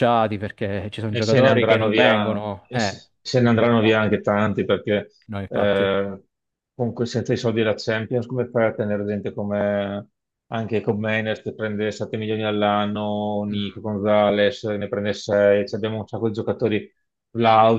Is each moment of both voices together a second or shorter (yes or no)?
no